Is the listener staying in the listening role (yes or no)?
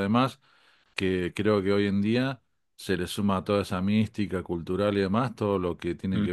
yes